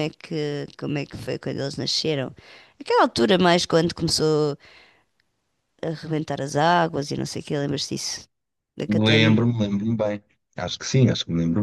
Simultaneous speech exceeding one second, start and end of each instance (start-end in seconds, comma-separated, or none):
none